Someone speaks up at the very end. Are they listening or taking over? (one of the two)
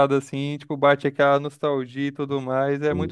taking over